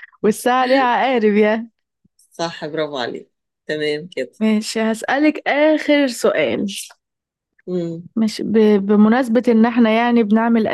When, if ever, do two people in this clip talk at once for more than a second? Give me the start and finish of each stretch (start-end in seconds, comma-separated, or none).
none